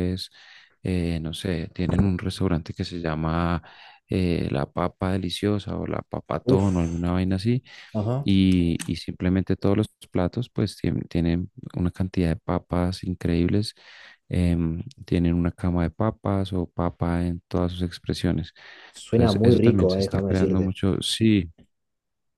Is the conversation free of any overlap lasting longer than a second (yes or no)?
no